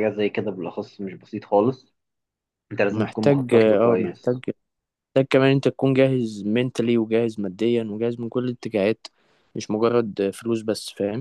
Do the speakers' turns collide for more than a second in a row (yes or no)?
yes